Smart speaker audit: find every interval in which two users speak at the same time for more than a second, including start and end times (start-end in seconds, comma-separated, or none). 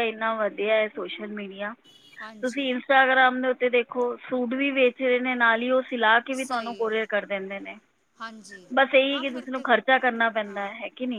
none